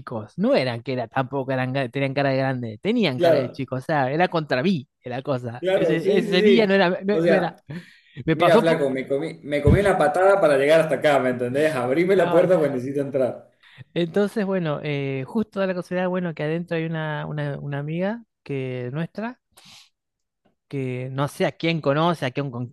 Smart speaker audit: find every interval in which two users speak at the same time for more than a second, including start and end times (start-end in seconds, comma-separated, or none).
5.6-7.6